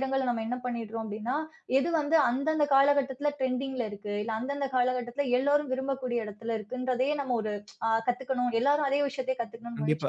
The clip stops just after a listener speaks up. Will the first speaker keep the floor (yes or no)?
no